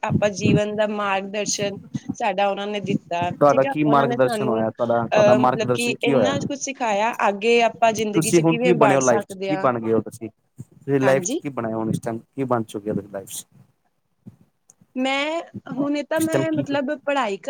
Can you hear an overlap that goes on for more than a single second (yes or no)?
yes